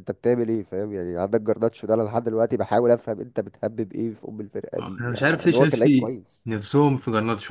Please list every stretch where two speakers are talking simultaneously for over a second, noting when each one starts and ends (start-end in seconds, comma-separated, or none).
4.8-6.5